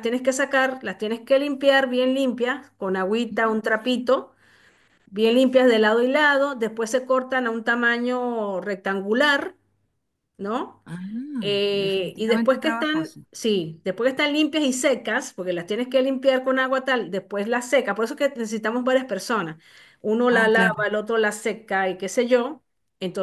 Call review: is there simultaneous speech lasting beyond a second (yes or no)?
yes